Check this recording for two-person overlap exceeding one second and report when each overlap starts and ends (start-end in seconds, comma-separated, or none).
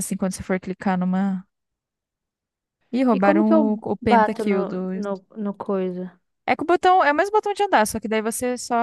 3.1-4.8